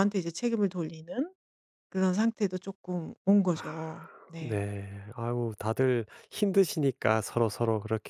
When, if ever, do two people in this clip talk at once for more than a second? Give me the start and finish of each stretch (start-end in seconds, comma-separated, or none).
none